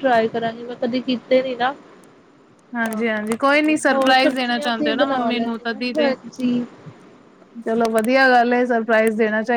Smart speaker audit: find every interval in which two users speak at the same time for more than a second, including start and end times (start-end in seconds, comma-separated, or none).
2.8-6.1